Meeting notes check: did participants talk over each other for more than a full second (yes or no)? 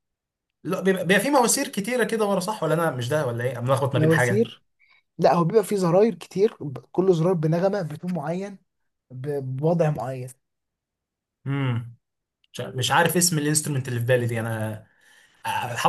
no